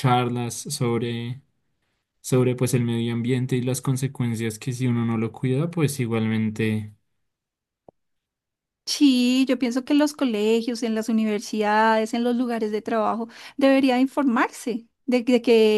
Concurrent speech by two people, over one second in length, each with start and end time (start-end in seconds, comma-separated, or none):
none